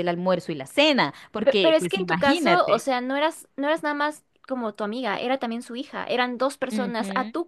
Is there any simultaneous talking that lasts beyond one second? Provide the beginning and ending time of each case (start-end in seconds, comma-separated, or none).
1.4-2.9